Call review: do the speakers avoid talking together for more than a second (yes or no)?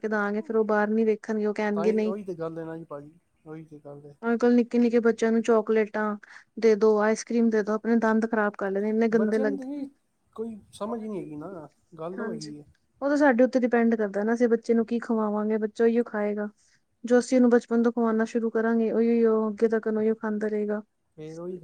yes